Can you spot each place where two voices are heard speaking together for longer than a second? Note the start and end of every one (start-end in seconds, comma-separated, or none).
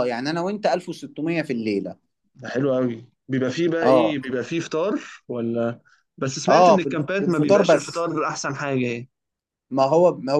6.5-8.1